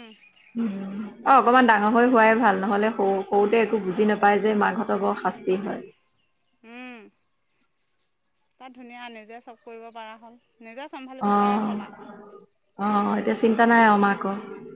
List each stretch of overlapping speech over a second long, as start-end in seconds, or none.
none